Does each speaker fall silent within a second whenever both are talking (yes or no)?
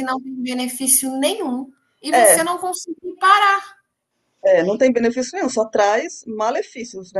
yes